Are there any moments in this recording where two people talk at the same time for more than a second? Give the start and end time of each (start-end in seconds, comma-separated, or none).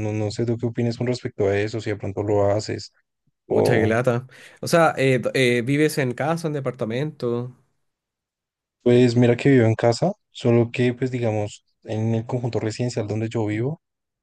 none